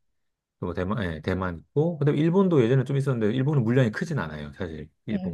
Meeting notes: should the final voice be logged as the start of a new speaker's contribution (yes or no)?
yes